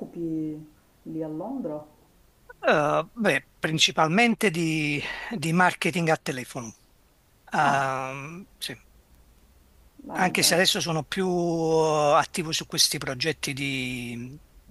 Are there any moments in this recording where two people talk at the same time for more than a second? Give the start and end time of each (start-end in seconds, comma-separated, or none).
none